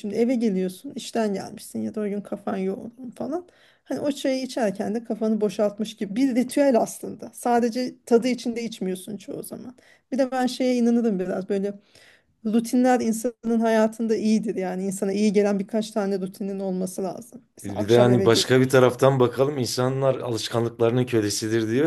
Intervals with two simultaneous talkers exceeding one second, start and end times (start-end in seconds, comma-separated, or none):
17.6-19.0